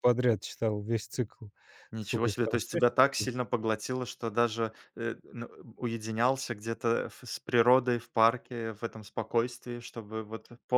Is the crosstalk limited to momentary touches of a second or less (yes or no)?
no